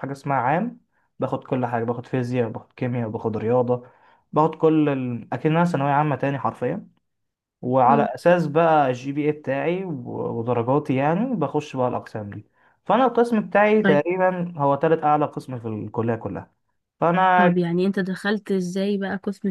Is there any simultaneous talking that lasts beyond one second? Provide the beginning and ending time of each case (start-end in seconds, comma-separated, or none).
none